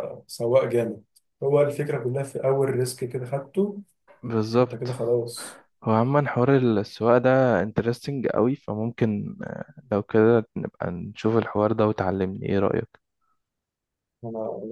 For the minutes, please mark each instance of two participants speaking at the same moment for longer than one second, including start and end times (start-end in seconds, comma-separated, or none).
none